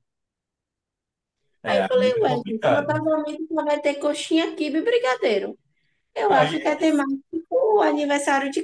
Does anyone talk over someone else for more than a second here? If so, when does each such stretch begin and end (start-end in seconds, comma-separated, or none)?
1.7-3.0